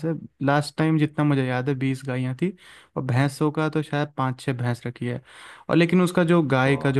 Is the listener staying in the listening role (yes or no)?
yes